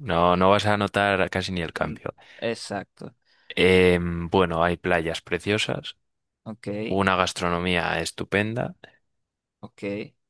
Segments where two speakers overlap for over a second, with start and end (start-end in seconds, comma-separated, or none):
none